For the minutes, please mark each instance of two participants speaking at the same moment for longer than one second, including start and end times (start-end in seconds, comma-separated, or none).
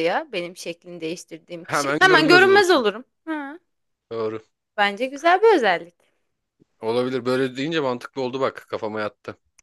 1.6-2.8